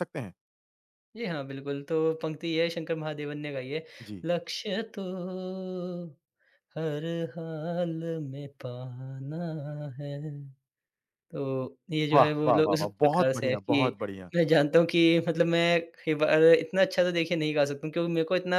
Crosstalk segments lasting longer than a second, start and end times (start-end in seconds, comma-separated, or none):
12.1-13.9